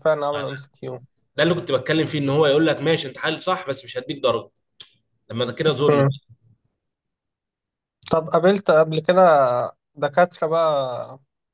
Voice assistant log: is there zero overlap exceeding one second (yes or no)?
yes